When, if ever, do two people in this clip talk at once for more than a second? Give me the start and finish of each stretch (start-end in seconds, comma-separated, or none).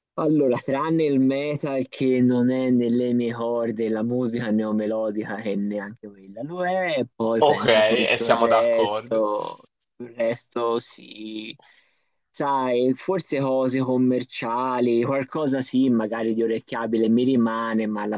7.4-9.3